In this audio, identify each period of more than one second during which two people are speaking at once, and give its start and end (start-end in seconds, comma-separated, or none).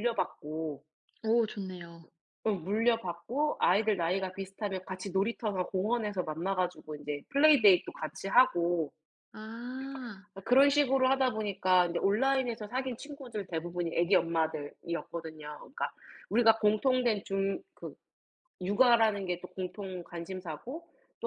none